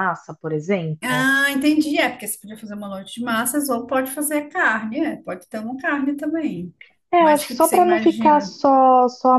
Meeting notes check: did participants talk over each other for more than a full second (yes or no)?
yes